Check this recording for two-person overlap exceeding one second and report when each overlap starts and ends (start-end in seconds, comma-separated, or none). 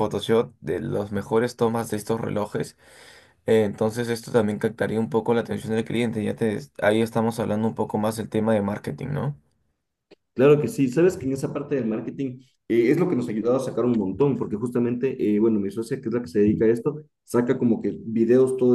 none